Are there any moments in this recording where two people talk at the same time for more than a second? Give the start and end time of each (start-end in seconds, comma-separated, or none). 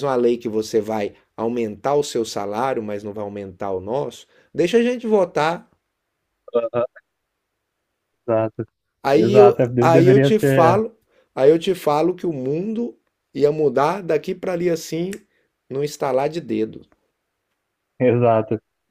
9.2-10.8